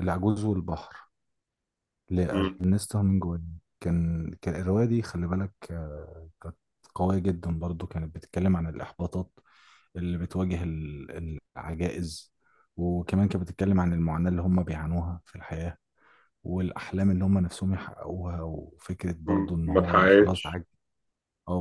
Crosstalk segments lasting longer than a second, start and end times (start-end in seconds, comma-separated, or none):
19.3-20.6